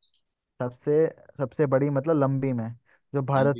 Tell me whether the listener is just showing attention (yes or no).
yes